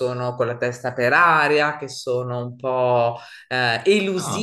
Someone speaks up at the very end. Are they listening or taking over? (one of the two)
listening